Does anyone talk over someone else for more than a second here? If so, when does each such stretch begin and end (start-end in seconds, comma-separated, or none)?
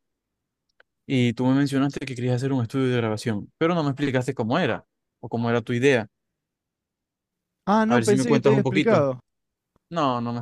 7.9-9.1